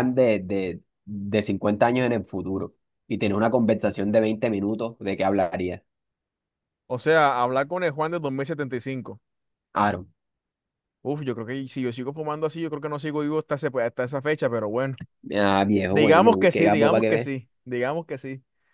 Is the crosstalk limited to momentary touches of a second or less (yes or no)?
no